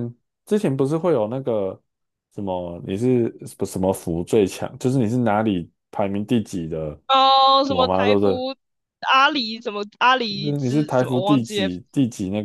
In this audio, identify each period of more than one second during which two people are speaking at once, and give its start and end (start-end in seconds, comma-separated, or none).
10.3-11.7